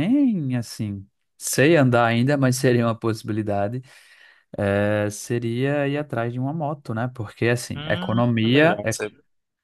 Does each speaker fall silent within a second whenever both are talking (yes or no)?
no